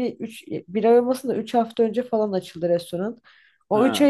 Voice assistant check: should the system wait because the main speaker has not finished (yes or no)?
yes